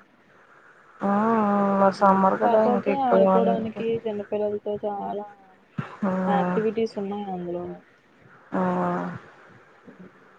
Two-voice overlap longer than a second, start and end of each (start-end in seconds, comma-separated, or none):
2.4-3.9